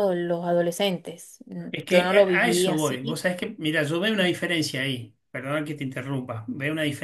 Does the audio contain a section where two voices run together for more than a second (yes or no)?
yes